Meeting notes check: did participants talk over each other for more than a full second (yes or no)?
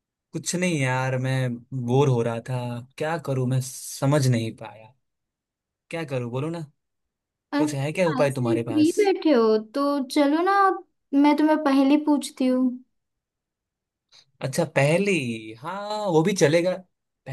yes